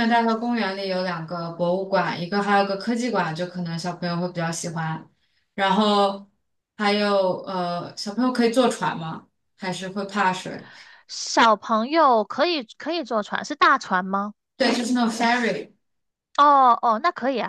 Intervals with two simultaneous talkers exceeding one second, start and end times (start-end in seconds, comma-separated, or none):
none